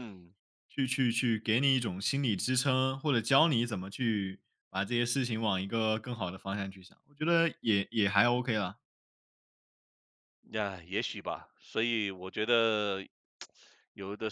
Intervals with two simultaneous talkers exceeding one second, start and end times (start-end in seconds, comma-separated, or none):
none